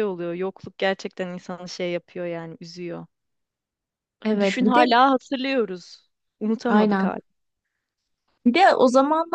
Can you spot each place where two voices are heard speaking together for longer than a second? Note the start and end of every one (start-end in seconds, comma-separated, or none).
none